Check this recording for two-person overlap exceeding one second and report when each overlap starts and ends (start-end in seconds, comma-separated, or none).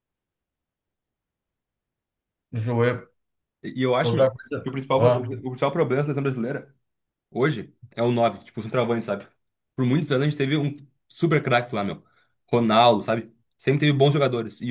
4.0-5.4